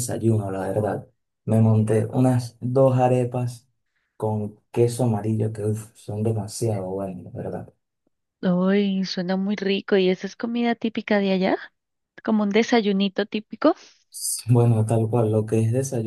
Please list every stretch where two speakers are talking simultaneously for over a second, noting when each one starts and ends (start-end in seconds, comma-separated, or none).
none